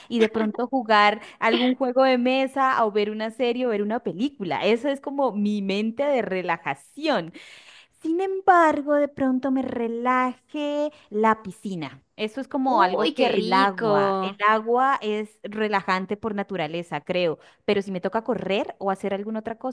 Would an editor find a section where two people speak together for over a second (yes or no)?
yes